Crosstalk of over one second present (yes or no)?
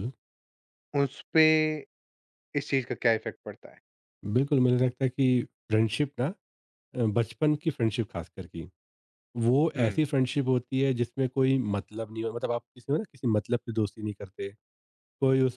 no